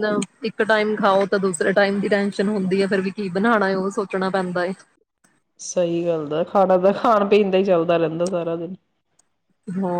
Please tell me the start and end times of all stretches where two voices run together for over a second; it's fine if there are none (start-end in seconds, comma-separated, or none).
none